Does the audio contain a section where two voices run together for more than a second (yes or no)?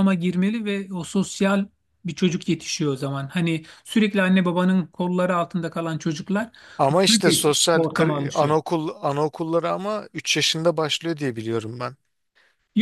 yes